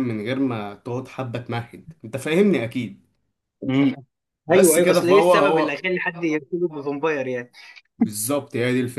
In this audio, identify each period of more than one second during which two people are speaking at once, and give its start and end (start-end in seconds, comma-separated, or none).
4.5-5.8